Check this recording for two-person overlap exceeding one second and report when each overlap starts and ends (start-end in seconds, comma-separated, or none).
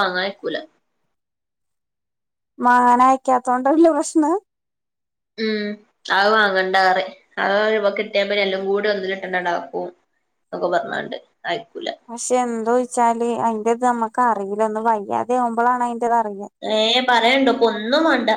none